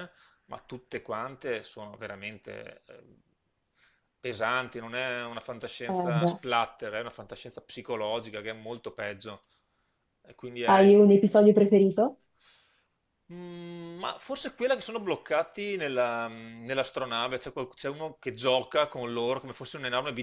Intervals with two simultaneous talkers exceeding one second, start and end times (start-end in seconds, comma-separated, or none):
none